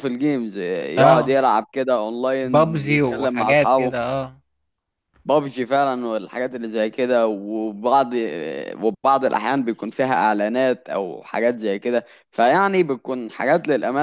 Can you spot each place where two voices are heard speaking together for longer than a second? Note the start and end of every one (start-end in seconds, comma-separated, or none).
2.4-4.1